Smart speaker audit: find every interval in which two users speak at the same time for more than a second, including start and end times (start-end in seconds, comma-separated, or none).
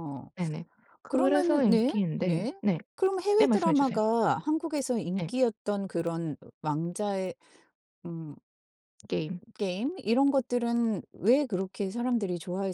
1.1-2.5